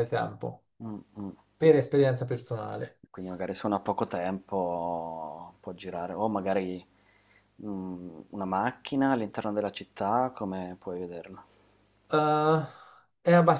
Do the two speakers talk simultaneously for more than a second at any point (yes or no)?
no